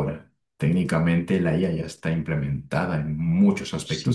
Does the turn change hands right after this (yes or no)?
yes